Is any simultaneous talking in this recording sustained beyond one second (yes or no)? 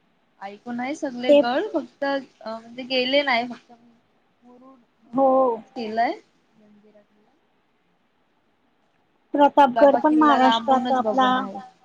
yes